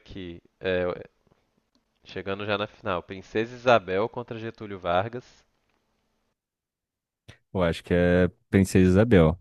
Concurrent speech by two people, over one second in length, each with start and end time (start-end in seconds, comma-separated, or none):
none